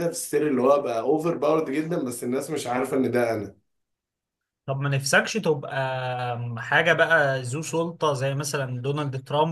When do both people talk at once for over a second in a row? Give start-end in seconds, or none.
none